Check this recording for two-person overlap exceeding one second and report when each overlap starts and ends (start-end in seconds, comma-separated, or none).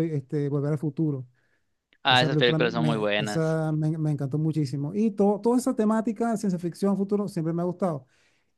2.1-3.6